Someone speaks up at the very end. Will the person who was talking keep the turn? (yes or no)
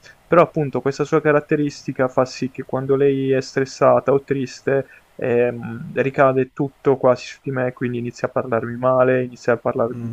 no